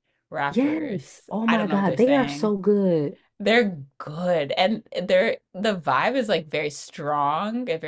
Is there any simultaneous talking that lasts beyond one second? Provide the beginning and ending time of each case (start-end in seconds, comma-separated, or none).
0.5-2.5